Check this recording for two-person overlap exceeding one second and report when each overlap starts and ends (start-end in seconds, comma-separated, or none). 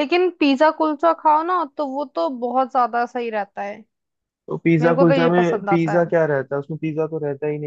4.8-6.1